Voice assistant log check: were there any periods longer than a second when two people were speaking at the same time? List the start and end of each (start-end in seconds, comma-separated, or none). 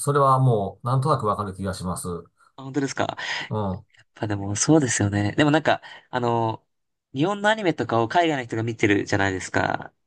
none